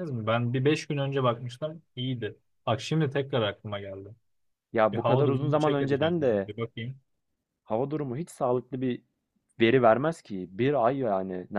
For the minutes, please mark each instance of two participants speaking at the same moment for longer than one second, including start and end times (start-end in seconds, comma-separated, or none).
4.9-6.5